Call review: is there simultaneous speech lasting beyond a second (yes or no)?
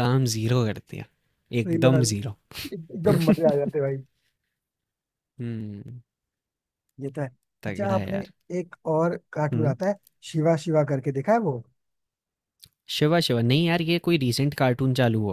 no